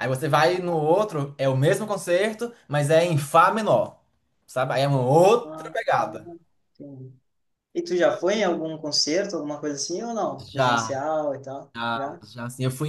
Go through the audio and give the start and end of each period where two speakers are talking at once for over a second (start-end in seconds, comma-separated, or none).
none